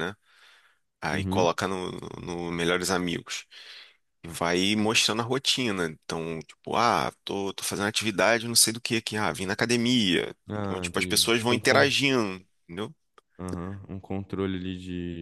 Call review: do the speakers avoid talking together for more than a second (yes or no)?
no